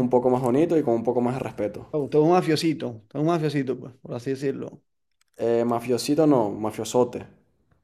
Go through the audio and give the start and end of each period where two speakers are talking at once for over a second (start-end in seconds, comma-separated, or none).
none